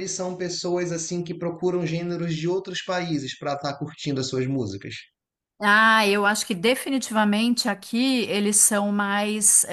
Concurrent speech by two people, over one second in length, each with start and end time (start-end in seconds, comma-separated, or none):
none